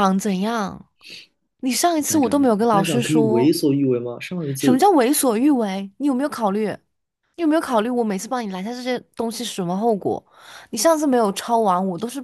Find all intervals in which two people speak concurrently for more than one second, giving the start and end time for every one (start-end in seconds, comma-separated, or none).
2.1-3.5